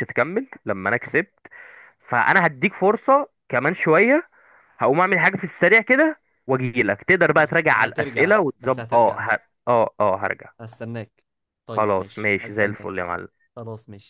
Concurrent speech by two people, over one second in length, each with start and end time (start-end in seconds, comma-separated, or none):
7.4-9.2, 11.7-13.0